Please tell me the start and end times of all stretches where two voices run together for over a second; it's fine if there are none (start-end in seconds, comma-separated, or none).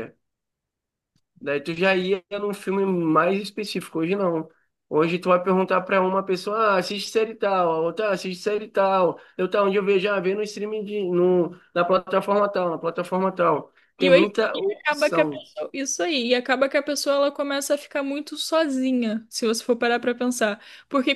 14.0-15.4